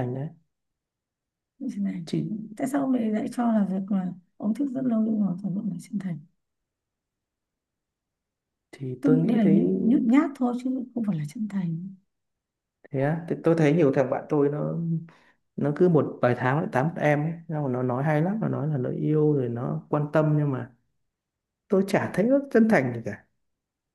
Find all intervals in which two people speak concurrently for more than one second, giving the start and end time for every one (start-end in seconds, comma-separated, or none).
none